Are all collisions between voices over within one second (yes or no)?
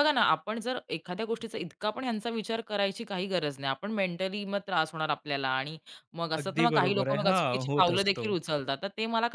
no